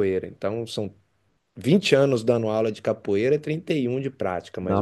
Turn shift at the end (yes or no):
yes